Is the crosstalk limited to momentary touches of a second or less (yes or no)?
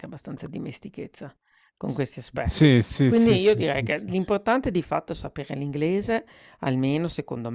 no